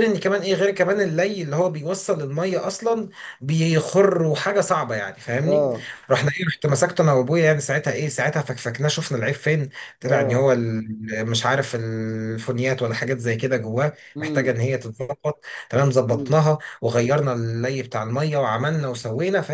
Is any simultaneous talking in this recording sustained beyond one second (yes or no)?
no